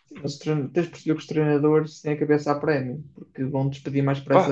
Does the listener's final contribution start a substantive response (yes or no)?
no